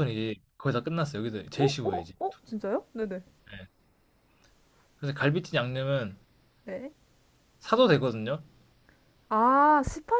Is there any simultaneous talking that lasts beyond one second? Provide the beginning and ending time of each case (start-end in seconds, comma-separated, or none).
none